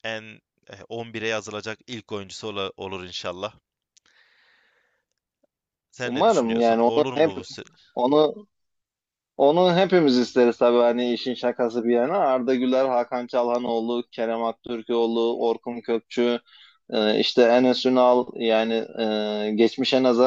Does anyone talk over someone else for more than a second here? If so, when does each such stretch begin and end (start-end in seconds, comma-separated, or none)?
6.0-7.3